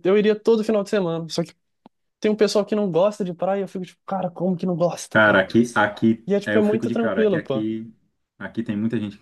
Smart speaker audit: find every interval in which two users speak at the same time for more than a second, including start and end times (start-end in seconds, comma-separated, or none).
6.3-7.7